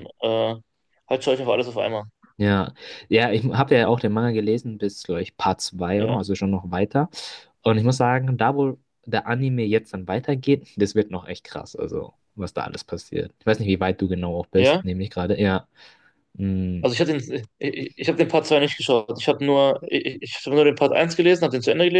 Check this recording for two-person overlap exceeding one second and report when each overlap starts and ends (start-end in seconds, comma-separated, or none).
none